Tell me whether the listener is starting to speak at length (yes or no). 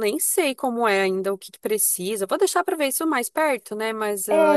yes